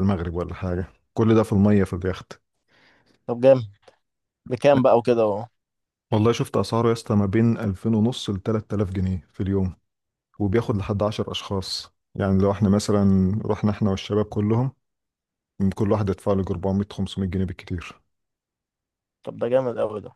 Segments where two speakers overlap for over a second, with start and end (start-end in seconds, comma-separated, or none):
none